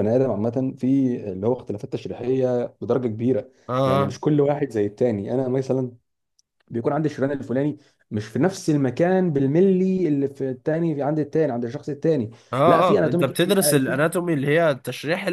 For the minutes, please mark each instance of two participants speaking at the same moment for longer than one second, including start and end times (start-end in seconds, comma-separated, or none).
12.5-14.0